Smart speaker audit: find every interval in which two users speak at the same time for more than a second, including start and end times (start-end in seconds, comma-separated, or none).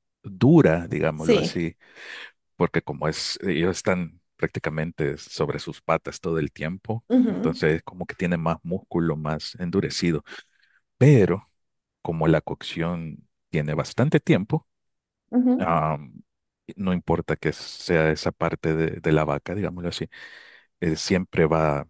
none